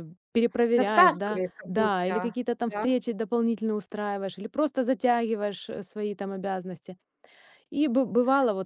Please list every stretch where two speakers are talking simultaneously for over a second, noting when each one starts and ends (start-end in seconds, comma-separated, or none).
0.7-2.9